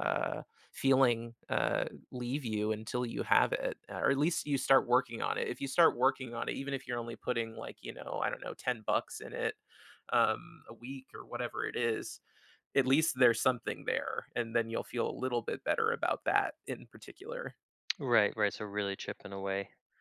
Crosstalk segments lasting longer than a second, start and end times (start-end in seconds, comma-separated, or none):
none